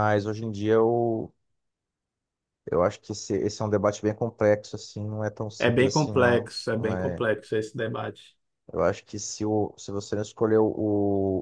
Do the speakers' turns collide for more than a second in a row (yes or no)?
yes